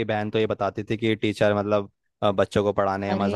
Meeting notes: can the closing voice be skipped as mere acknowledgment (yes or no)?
yes